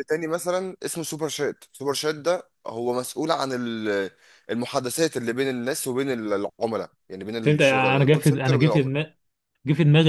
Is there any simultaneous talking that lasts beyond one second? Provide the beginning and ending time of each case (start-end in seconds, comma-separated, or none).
7.4-8.9